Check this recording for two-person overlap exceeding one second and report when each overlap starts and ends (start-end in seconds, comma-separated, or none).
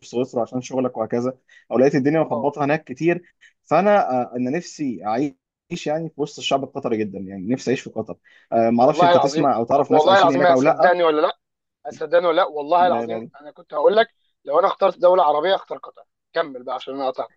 8.8-10.6